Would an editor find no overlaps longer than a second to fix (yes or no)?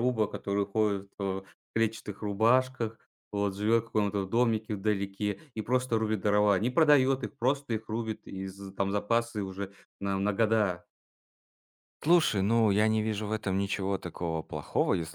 yes